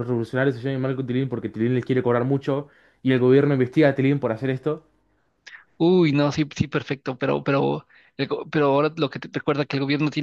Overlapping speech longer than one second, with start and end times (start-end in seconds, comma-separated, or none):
none